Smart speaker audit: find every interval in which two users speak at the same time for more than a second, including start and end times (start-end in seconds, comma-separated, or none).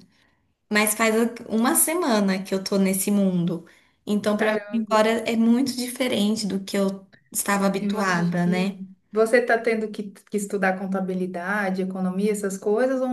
7.5-8.8